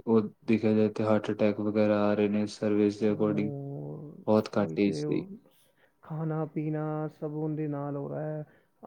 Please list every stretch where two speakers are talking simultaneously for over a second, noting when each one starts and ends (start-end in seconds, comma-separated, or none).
none